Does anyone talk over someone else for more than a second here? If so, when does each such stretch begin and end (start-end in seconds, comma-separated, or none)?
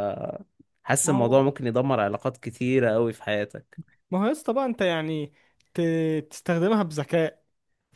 none